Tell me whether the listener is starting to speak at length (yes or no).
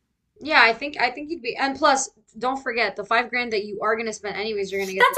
yes